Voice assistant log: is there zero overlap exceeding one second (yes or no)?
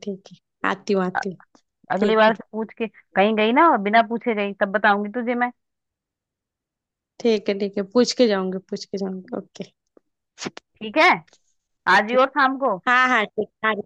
yes